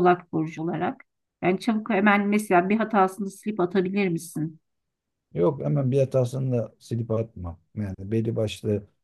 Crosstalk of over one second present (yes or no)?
no